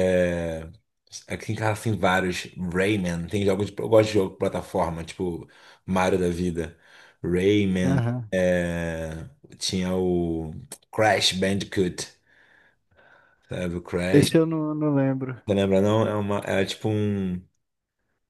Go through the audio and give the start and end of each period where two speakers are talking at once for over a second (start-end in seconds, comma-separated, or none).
none